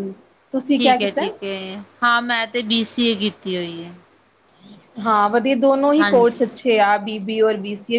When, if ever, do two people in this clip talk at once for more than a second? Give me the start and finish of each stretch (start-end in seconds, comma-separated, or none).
none